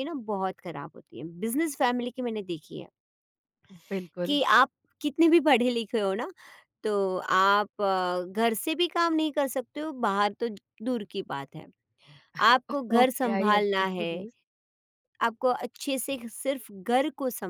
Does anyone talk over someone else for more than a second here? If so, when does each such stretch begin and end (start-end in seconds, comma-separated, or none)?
12.7-14.1